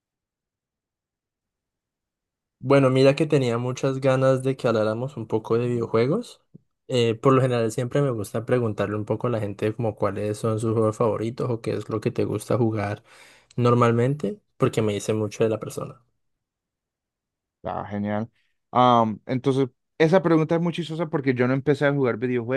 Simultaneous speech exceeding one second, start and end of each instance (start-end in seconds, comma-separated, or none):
none